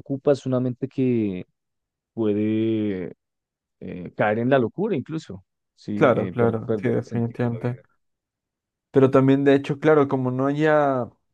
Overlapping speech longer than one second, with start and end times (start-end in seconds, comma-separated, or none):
5.9-7.8